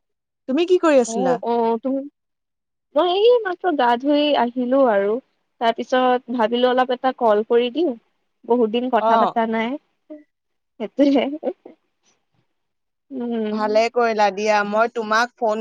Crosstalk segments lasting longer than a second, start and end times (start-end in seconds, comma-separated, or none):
none